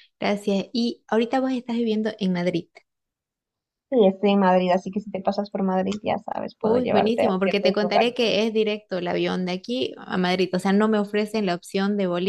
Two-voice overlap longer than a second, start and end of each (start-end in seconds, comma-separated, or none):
6.6-8.4